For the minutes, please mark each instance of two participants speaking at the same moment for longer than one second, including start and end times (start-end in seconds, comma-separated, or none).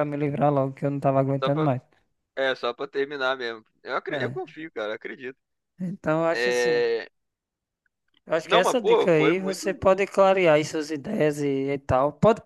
8.4-9.7